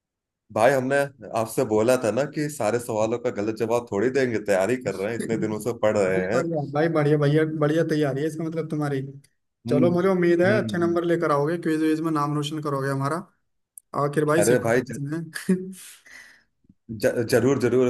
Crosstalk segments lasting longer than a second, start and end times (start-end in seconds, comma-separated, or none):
5.2-6.4